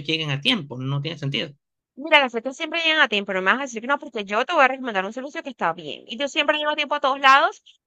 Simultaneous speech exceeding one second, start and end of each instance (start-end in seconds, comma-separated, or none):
none